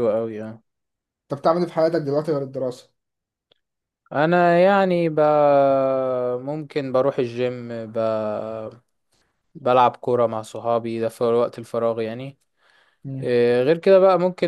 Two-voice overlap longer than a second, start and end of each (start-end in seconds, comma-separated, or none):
none